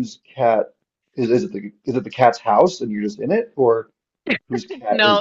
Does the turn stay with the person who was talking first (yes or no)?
no